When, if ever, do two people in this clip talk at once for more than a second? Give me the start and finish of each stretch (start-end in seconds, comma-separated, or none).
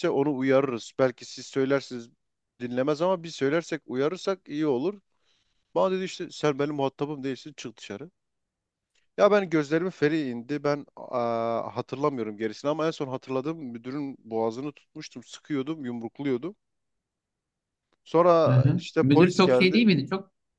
18.5-19.8